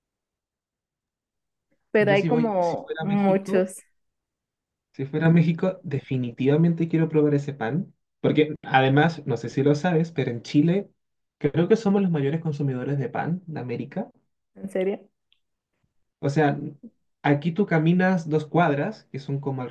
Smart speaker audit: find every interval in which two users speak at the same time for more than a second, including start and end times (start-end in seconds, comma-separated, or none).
2.0-3.7